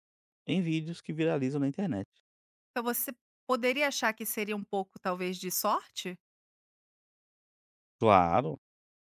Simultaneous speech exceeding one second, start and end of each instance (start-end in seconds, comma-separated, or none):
none